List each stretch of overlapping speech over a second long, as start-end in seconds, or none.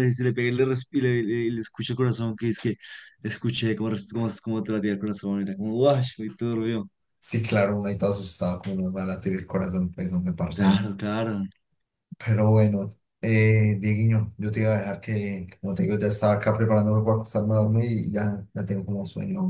none